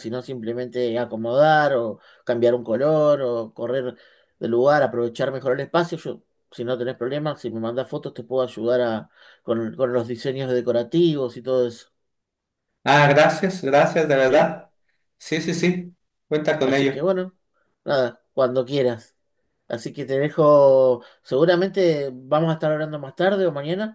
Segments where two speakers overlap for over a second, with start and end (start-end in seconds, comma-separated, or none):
none